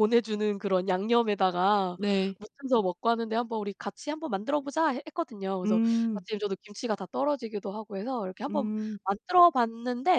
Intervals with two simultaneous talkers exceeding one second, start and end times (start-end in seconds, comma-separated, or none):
none